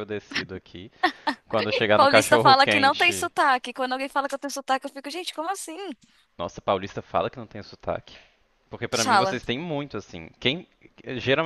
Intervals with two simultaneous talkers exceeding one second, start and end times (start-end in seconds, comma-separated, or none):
1.9-3.3